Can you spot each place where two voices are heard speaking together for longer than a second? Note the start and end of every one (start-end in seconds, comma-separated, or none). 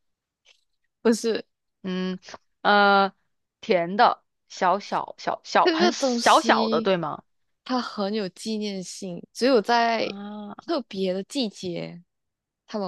5.6-6.9